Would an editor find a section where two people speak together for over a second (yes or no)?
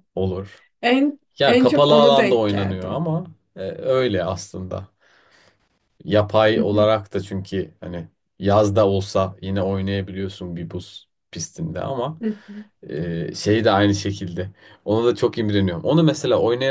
yes